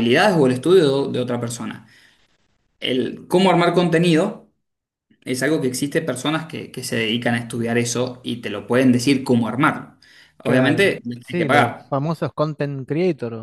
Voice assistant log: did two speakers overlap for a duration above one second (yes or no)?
yes